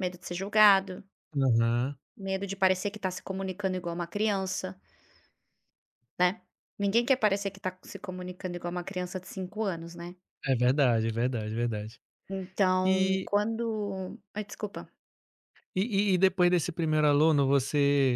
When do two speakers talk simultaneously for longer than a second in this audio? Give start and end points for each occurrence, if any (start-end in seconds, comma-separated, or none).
none